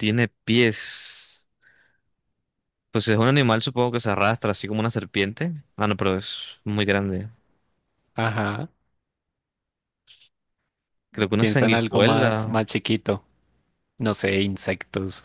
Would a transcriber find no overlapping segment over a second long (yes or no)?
no